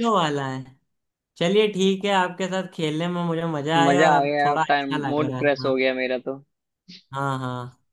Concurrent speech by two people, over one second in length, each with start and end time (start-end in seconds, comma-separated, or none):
3.9-5.8